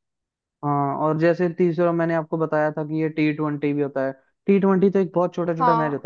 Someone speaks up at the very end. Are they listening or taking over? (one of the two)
listening